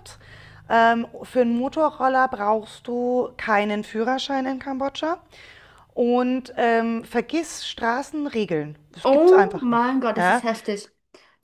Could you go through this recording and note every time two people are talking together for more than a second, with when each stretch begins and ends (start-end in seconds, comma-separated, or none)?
9.0-10.4